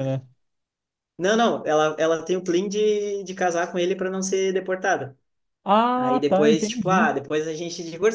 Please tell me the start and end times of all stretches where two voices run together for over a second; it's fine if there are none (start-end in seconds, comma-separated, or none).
5.9-7.2